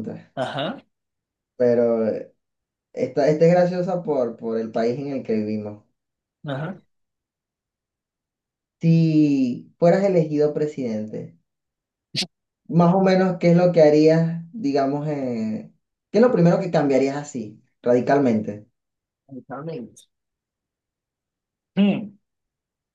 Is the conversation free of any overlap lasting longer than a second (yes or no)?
yes